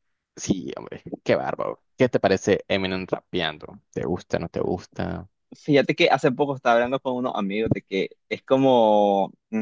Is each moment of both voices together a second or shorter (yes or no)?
yes